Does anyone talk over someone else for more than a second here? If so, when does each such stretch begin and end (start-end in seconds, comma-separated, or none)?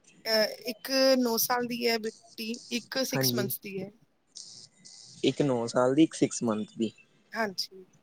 none